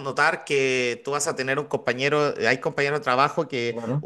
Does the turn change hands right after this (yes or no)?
no